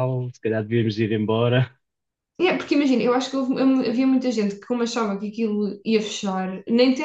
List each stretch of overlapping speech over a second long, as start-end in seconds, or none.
none